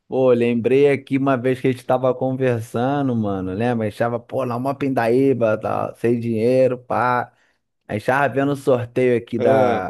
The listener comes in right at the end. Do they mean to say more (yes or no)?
no